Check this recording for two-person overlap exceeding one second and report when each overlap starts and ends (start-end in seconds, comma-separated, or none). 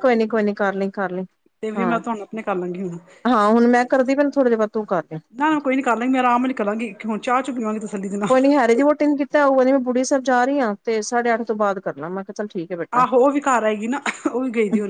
none